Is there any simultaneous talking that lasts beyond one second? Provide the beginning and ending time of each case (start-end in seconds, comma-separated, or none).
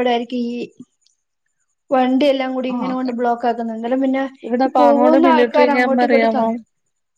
4.7-6.3